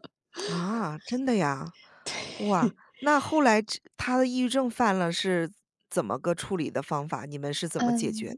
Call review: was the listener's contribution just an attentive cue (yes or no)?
no